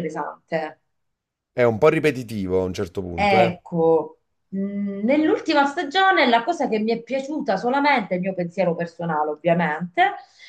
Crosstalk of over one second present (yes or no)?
no